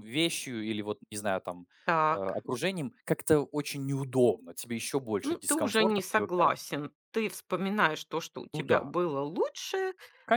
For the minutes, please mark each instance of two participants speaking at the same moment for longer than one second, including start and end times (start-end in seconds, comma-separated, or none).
5.2-6.5